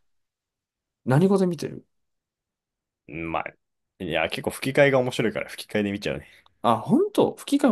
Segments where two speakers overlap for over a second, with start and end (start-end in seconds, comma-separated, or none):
none